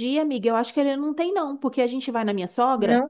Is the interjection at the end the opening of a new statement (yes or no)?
no